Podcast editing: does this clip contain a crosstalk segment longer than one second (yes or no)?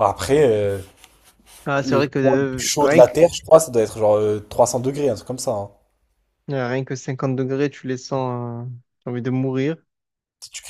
yes